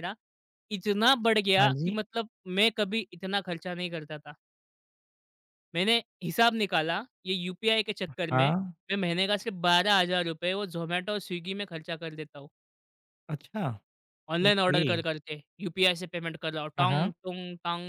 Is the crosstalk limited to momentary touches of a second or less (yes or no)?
yes